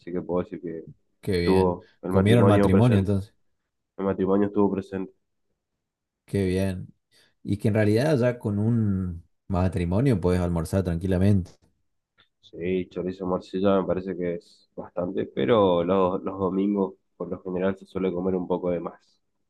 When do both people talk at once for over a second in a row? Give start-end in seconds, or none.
1.3-3.1